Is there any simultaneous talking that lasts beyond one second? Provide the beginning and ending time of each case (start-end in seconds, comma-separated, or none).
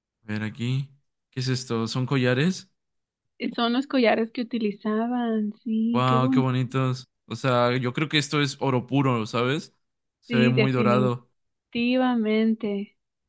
none